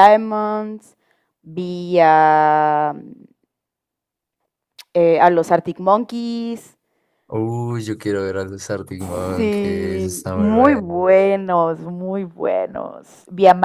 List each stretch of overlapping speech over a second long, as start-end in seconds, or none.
9.4-11.0